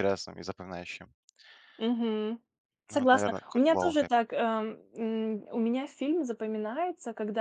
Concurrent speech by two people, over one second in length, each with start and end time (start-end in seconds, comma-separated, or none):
2.9-4.1